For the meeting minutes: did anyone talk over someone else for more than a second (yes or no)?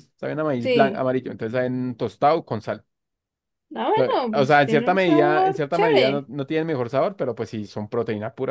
yes